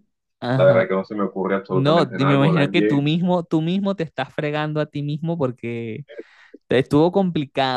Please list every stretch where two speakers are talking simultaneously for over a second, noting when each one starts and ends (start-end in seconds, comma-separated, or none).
1.7-3.0